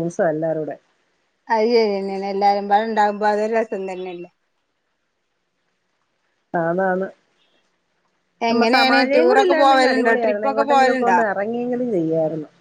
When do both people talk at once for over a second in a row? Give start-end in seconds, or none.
8.5-11.2